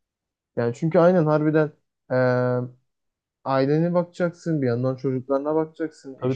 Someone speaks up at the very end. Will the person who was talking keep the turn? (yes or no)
no